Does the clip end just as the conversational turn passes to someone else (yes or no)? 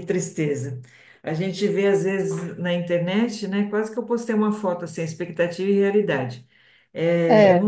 no